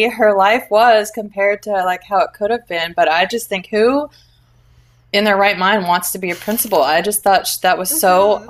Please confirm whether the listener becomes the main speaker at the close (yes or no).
no